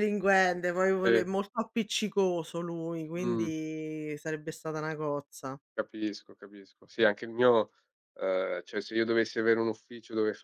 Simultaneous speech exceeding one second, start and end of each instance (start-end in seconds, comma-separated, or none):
none